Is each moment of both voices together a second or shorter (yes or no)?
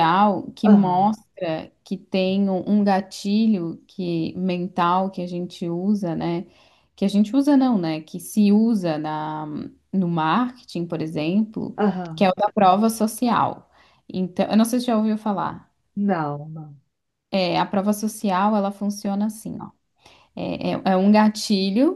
yes